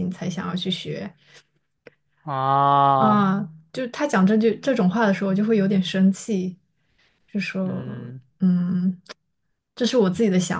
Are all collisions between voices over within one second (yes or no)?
yes